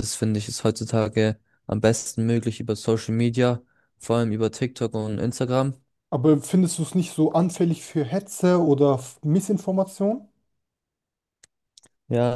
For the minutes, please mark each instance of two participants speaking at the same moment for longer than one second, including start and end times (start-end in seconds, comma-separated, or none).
none